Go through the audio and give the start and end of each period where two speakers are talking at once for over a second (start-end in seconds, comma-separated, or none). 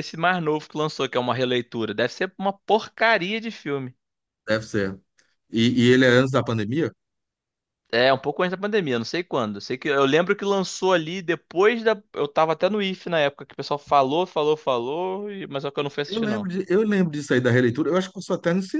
none